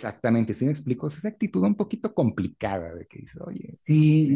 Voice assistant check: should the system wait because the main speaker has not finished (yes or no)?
no